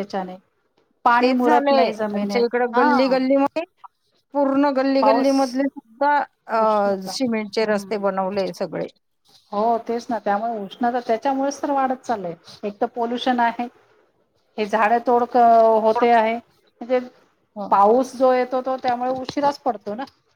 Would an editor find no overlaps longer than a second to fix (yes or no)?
no